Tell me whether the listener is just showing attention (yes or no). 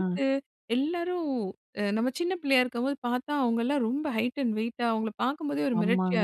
no